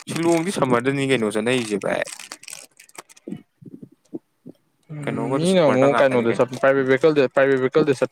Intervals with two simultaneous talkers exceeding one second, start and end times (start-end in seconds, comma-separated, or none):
5.0-6.5